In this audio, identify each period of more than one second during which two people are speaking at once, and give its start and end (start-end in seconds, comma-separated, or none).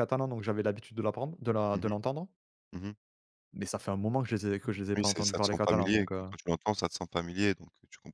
5.0-6.3